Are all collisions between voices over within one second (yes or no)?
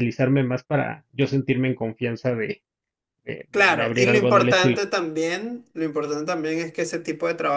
no